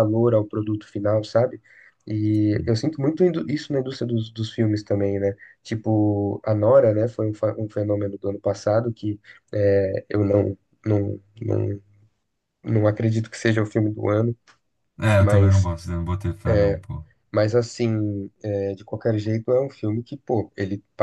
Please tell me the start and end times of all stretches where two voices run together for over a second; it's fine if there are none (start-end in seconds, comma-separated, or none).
none